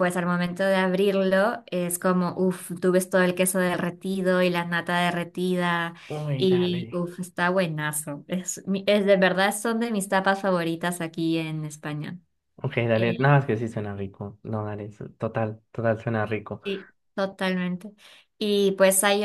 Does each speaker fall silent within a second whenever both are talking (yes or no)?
yes